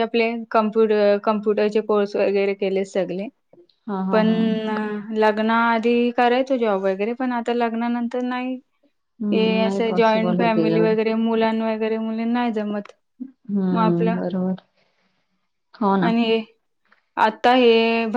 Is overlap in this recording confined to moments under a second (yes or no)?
no